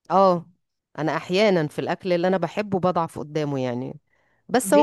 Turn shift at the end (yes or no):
no